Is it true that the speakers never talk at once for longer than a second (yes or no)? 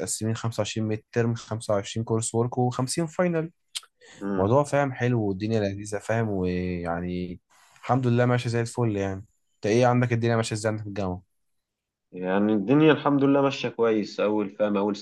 yes